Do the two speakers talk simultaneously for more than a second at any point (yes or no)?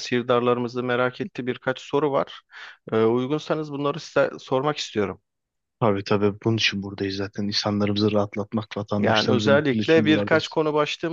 yes